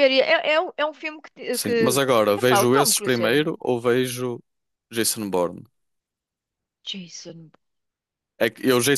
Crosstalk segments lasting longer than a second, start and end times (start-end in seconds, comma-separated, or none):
1.5-3.4